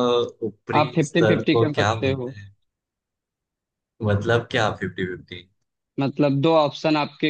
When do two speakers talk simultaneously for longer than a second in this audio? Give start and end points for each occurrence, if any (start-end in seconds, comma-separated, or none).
0.8-2.3